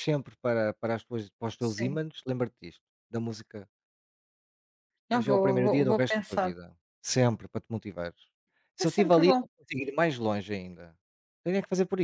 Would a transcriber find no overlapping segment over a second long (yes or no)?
no